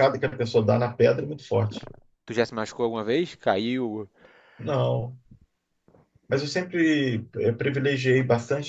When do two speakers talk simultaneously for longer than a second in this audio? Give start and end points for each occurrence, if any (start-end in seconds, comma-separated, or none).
none